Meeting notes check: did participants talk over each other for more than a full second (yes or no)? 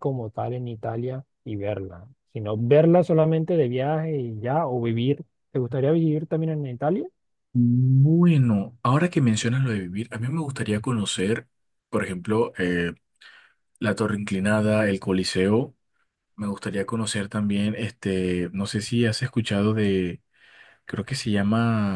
no